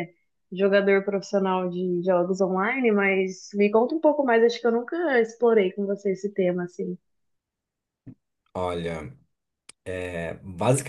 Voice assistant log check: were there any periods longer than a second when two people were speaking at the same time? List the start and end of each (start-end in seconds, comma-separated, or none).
none